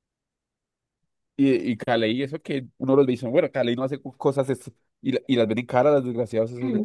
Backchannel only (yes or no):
no